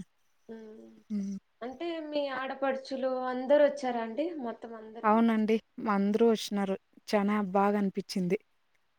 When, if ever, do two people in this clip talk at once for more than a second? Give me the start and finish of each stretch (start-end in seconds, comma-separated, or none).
none